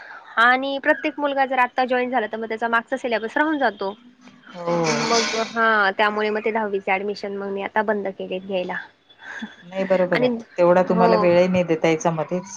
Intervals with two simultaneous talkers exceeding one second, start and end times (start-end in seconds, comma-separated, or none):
none